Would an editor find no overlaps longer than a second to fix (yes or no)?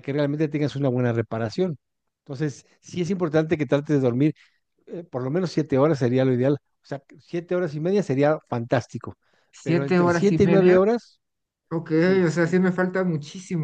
no